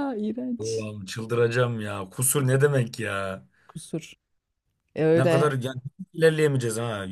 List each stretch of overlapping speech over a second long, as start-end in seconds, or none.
none